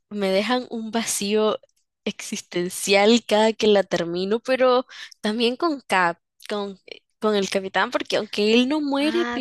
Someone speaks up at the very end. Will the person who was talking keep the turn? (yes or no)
no